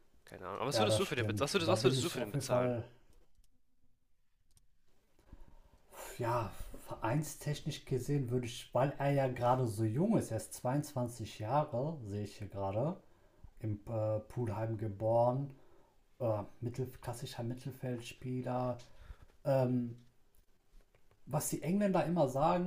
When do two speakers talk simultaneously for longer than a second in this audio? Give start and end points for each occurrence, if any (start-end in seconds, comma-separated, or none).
0.7-2.8